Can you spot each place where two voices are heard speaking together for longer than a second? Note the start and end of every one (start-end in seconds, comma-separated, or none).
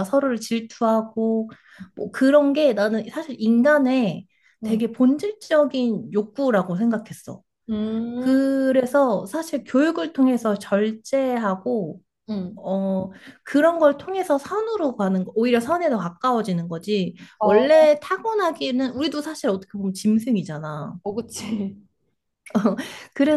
none